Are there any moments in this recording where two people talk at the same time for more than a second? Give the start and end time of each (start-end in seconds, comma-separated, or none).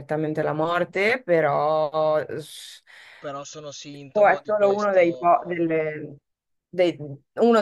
4.1-5.6